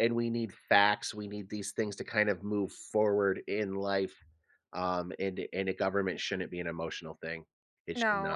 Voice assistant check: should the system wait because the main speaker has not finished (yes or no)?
no